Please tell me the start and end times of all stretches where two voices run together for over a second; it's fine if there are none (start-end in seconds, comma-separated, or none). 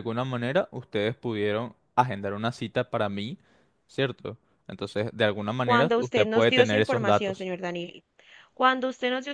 5.6-7.5